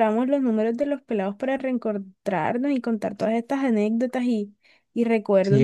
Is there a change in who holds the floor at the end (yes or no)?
yes